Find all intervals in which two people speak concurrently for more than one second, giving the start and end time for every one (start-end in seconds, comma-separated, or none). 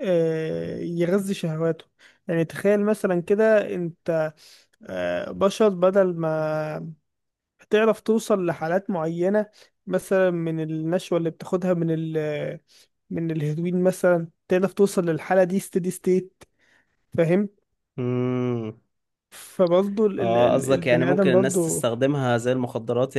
20.2-21.8